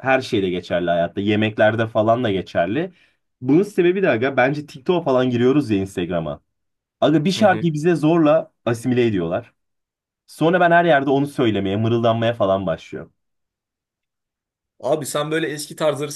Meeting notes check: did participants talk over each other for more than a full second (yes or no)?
no